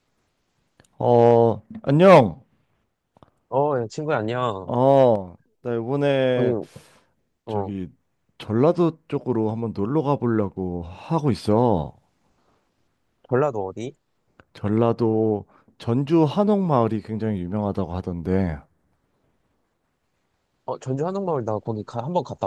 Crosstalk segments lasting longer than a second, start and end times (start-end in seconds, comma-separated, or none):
none